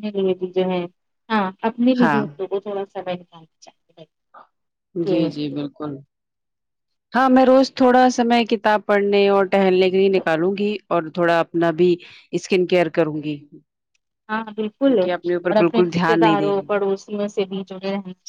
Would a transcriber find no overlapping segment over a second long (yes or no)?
no